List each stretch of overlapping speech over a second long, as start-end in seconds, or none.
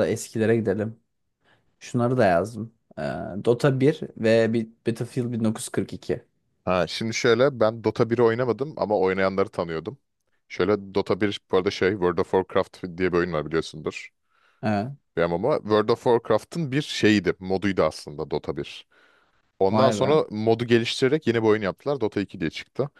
none